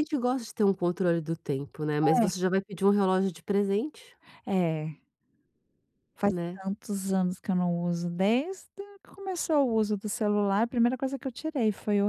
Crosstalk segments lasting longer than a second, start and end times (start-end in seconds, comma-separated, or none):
none